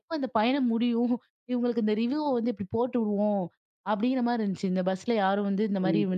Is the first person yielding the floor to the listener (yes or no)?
no